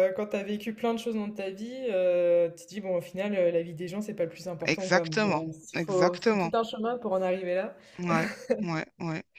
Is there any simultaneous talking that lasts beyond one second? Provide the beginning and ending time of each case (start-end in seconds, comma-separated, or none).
4.6-6.5